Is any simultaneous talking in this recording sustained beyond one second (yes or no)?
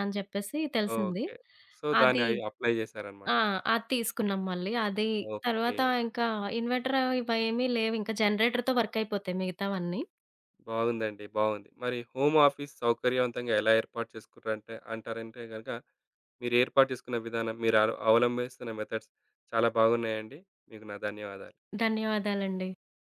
no